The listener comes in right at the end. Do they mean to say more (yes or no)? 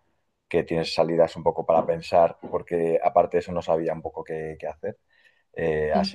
no